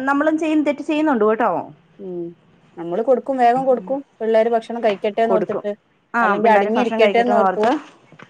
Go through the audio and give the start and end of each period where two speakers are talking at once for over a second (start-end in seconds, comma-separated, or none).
6.2-7.7